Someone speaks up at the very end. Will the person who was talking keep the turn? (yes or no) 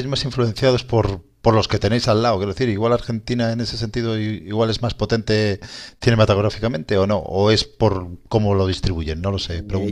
no